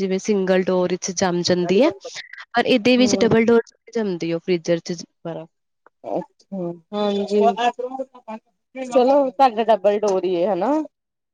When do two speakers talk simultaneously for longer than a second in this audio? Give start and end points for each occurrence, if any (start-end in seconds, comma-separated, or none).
none